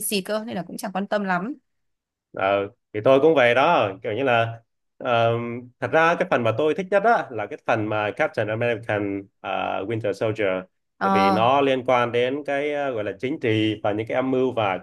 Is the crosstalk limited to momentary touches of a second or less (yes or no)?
yes